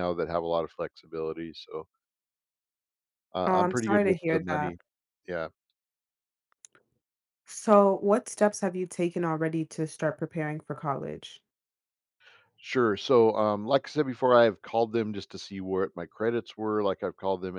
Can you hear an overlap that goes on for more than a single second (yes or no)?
yes